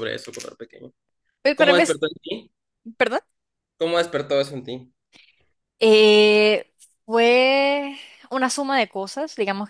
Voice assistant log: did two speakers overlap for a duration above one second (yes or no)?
no